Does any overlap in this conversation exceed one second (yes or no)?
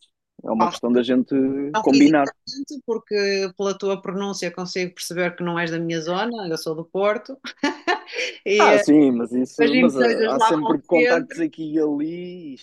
yes